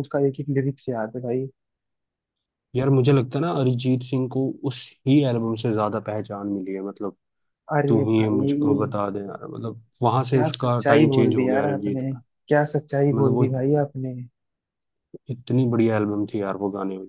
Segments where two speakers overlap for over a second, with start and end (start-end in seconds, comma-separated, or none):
10.3-12.0